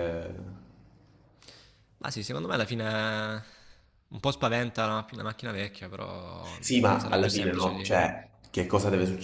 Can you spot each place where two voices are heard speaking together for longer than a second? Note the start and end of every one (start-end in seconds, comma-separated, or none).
6.6-8.1